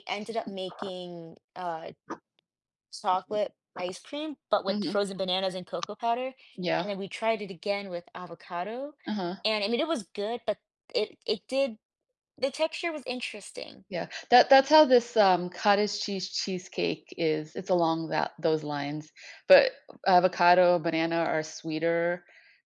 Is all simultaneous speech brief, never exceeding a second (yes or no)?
yes